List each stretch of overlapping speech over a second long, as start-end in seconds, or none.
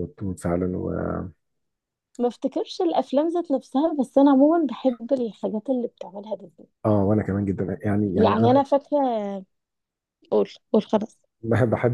none